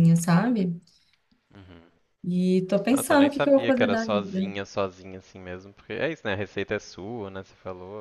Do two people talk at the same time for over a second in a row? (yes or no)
yes